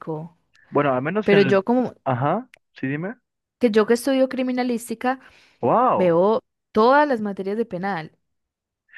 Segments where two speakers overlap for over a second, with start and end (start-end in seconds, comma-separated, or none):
none